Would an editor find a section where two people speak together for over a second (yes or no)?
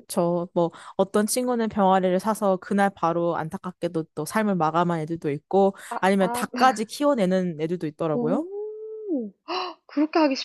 no